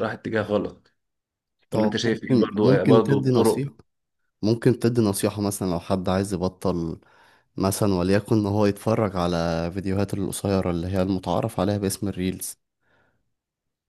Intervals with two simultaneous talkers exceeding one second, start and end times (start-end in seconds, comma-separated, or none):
1.7-3.7